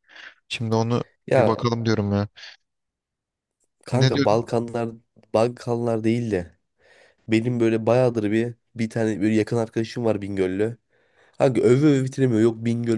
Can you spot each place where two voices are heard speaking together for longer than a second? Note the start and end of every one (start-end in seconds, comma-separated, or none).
none